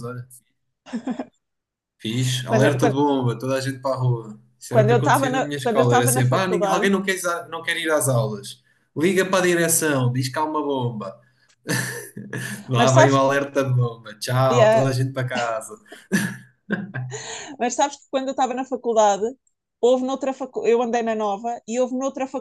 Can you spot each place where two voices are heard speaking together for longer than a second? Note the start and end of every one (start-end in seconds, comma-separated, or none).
4.7-6.8